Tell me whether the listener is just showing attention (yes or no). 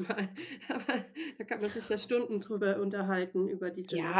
no